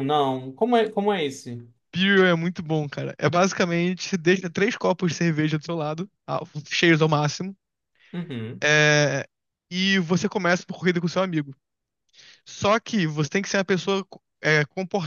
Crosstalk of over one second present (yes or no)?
no